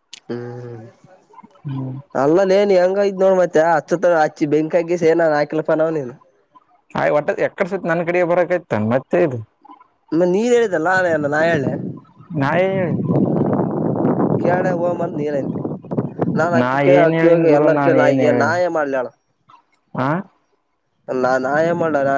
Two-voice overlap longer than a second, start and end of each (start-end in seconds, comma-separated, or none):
16.4-18.6